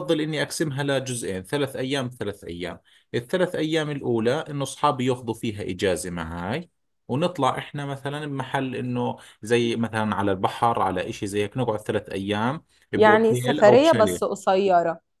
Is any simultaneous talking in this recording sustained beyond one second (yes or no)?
yes